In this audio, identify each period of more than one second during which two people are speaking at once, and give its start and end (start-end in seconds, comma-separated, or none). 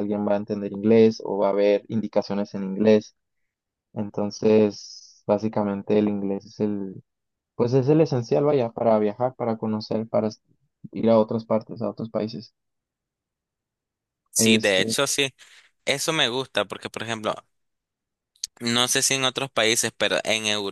none